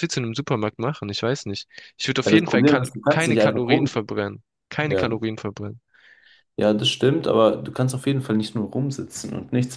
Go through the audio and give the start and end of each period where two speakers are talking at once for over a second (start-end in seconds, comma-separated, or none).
2.2-3.9